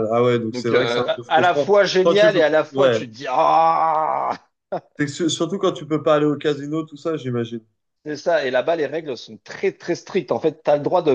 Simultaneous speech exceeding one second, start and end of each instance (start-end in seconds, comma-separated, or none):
0.5-3.0